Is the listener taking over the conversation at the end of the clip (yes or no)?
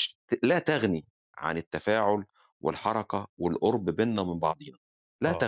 yes